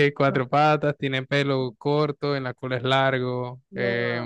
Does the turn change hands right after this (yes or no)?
yes